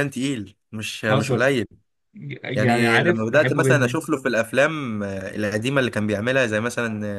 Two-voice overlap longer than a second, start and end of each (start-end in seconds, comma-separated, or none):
2.5-4.0